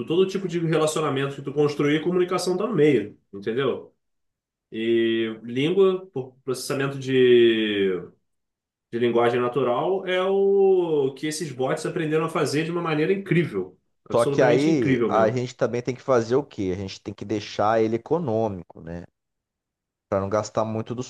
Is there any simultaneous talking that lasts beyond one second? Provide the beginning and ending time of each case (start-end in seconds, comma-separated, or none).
14.1-15.4